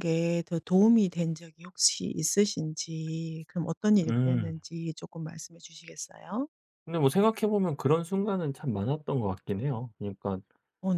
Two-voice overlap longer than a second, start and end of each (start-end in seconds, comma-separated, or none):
none